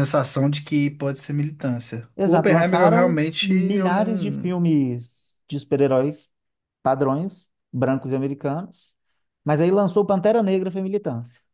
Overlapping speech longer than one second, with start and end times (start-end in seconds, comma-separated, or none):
2.1-4.5